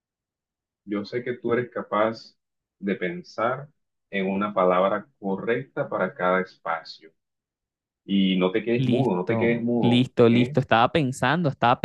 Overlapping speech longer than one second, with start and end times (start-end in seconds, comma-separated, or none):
8.8-10.6